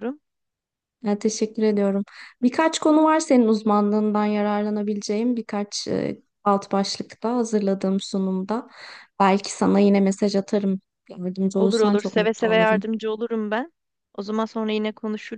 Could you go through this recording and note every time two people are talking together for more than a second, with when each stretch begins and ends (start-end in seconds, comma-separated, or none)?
11.6-12.9